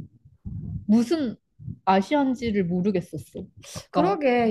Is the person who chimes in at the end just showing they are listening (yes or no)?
no